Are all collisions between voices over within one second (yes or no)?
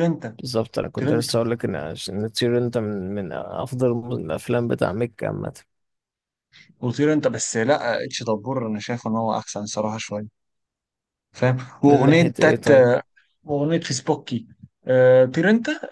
yes